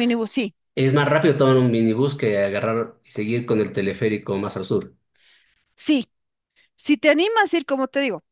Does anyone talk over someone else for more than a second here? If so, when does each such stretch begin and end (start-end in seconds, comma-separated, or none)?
none